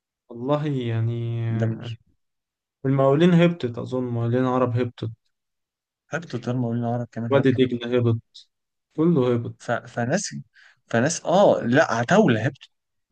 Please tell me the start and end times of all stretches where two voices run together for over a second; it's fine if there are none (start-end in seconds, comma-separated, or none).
none